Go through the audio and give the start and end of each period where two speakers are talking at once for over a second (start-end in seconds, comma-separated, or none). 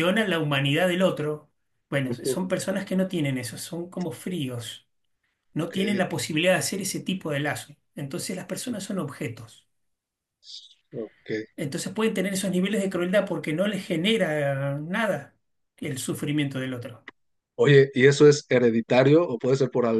none